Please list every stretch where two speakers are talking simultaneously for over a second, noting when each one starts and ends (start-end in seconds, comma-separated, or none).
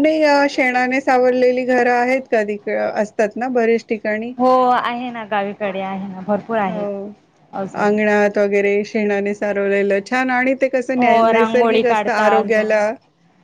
11.0-12.8